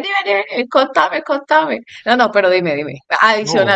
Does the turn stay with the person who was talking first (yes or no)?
yes